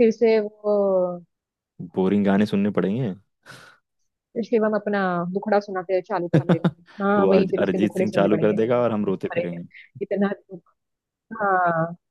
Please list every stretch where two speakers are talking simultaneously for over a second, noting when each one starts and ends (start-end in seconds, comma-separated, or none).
7.2-9.6